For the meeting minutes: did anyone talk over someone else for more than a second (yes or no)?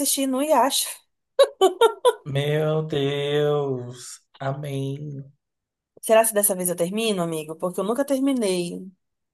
no